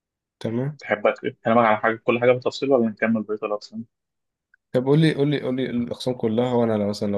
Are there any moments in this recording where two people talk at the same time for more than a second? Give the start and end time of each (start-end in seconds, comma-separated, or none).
none